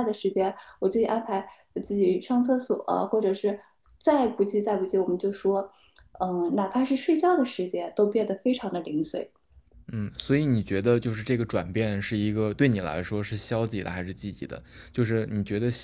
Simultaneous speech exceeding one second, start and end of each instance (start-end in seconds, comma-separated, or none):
none